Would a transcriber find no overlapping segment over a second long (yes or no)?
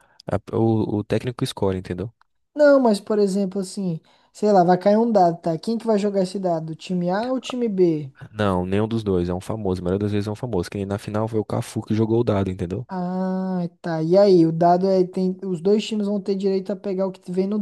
yes